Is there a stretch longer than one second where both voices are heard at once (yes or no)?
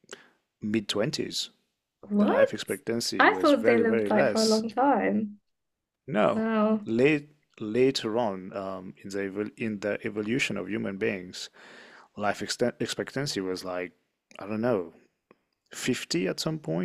yes